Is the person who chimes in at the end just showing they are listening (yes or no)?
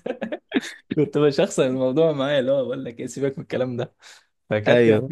yes